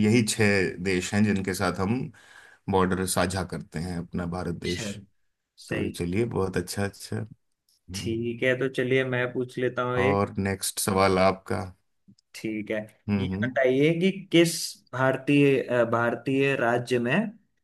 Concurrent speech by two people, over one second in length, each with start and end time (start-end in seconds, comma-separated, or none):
none